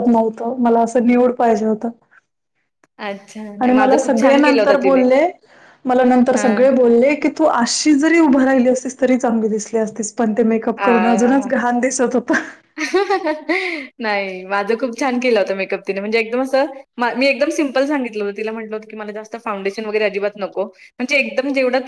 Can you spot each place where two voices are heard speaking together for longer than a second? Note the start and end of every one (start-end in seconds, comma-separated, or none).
3.6-5.0